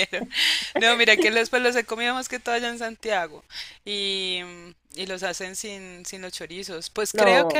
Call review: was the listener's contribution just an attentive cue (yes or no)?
yes